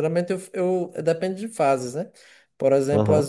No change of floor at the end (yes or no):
yes